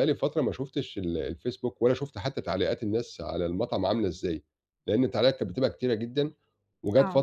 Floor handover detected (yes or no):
no